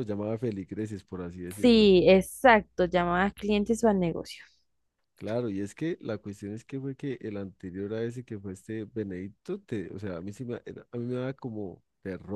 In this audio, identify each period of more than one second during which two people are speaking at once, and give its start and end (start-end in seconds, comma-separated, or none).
none